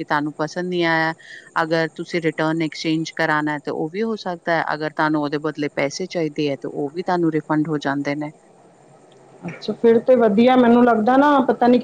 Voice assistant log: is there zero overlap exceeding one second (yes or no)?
yes